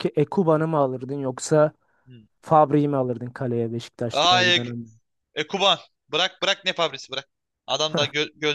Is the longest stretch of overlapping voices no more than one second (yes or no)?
yes